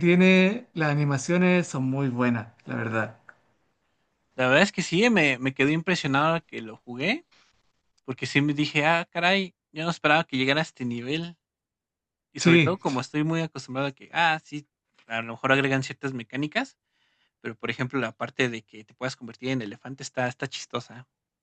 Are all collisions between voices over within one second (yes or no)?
yes